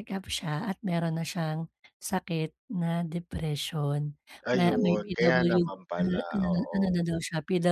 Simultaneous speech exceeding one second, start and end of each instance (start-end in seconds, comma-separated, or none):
4.5-7.0